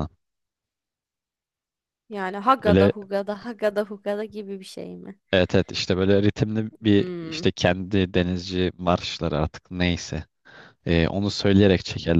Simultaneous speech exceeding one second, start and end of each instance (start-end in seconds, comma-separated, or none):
none